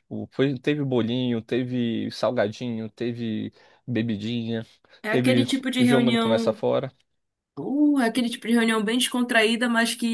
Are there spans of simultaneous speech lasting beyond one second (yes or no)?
yes